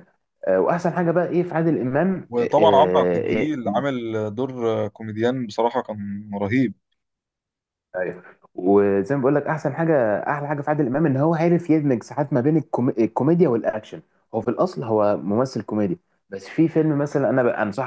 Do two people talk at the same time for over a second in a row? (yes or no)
yes